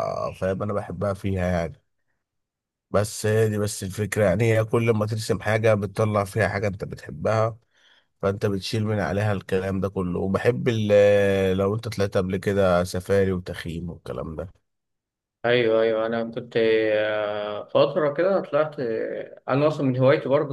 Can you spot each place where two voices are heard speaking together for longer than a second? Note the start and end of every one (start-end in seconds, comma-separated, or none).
none